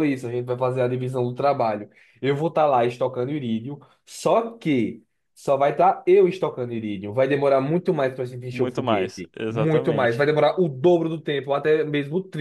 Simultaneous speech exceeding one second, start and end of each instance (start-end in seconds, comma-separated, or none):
8.5-10.3